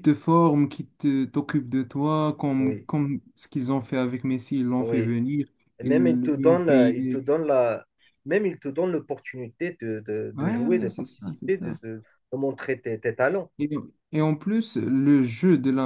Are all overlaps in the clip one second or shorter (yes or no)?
no